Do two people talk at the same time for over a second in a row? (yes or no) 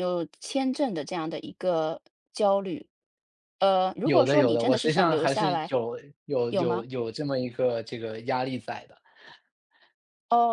yes